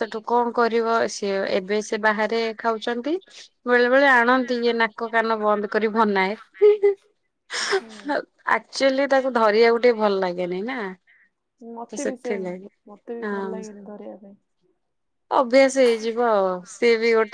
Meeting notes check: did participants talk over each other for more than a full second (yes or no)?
no